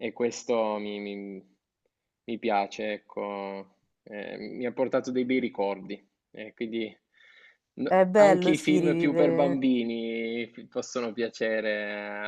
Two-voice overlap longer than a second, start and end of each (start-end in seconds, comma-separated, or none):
7.9-9.6